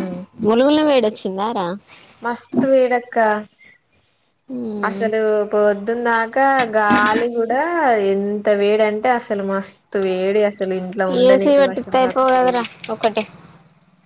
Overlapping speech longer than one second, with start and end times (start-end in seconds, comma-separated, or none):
11.3-12.6